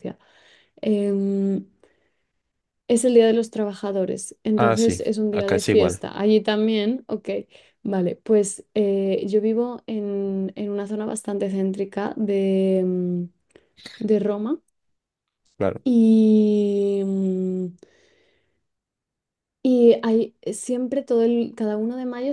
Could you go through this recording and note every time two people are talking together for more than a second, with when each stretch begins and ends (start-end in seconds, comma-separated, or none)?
4.6-6.0